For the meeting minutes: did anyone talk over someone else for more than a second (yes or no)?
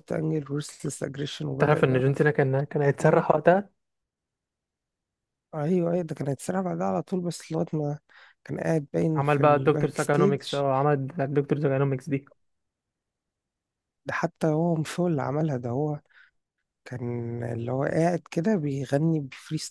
yes